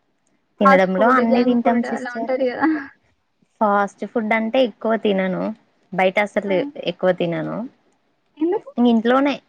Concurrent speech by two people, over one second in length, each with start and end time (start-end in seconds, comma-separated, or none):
0.6-2.3